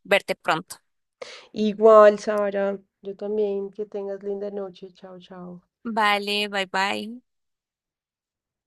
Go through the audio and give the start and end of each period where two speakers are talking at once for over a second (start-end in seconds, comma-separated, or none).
none